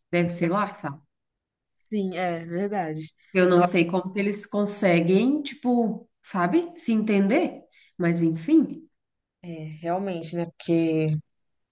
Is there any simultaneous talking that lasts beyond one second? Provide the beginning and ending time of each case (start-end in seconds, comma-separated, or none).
none